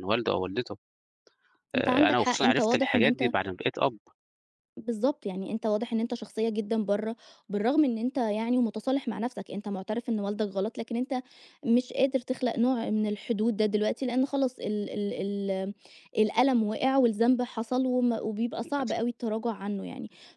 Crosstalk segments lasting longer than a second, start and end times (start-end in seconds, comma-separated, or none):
1.8-3.3